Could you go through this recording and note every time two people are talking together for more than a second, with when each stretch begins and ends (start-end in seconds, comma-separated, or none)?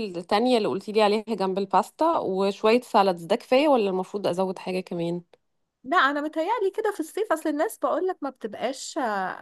none